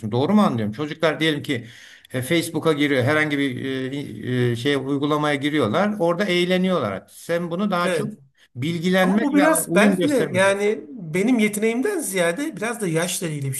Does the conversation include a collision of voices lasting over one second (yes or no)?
yes